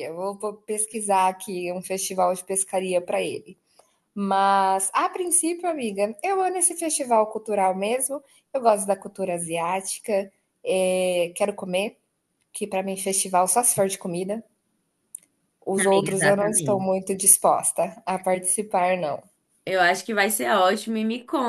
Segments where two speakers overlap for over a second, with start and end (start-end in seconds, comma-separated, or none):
15.8-17.0